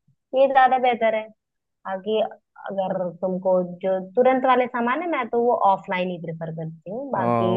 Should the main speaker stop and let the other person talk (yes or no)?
yes